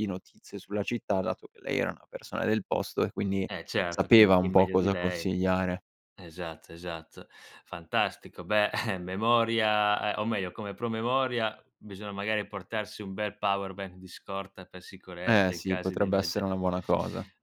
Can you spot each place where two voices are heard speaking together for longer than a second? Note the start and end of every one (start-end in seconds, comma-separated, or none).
3.9-5.3, 15.3-16.5